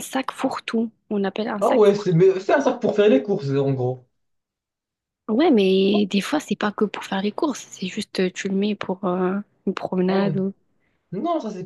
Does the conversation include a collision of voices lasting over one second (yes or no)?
no